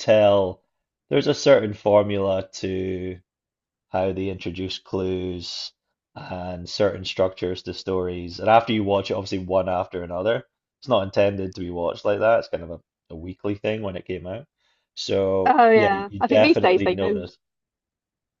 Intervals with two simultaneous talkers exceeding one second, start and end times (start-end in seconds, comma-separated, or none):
15.4-17.2